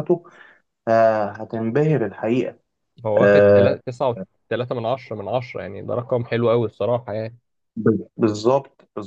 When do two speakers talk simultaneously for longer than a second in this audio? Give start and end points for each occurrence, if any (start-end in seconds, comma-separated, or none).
none